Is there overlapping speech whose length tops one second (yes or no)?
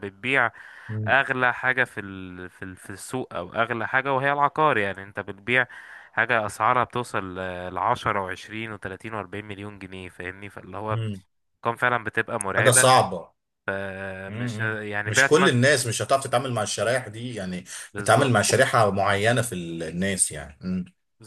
yes